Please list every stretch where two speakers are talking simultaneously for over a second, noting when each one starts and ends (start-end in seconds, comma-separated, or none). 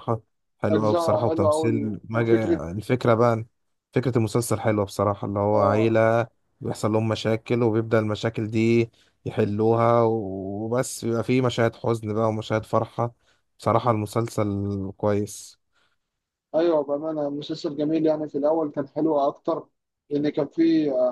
0.7-2.3